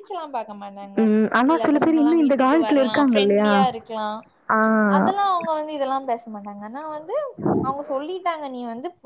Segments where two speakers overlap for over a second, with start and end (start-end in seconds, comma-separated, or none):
1.5-3.5